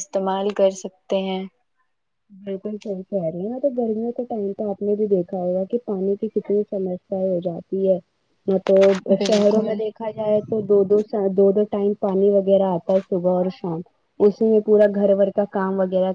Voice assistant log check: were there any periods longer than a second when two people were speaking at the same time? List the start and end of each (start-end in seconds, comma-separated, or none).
none